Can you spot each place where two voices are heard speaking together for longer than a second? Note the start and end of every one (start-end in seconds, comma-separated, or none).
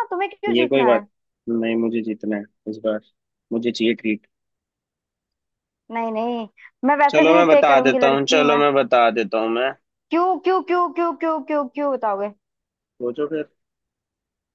7.1-8.6